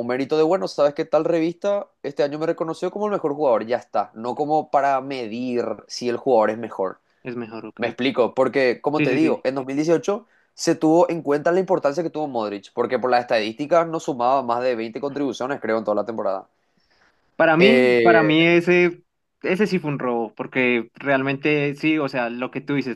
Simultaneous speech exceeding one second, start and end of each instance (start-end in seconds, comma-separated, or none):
none